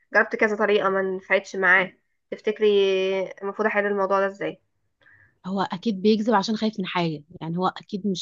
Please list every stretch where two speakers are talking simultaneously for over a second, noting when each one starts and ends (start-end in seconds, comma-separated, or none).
none